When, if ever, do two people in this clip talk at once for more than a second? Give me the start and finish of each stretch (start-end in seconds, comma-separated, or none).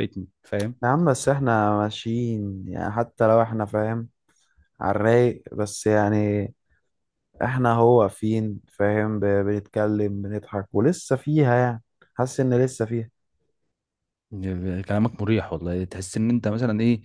none